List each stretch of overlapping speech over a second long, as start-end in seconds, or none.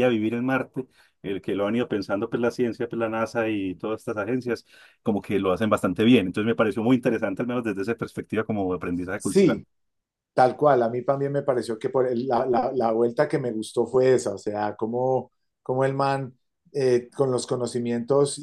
none